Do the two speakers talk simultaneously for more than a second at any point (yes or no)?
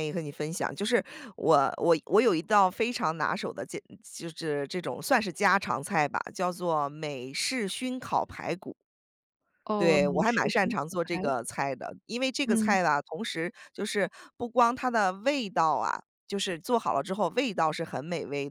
yes